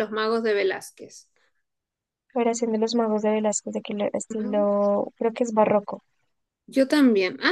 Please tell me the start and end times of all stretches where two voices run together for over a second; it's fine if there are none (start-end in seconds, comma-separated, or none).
none